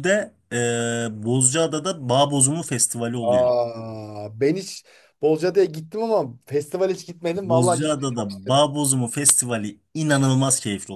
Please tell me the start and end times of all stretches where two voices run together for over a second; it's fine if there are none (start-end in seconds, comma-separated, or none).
7.4-8.6